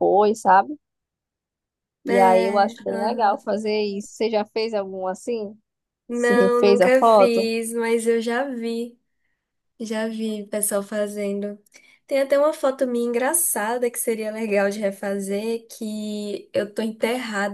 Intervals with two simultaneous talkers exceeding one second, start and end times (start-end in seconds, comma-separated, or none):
2.1-3.4, 6.1-7.5